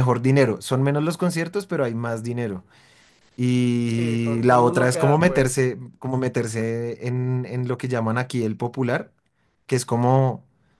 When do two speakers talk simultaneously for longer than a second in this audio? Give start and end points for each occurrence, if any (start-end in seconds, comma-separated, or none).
4.0-5.7